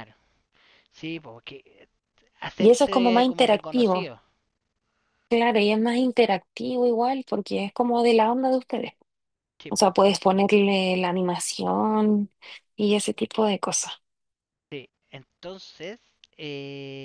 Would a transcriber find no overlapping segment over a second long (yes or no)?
no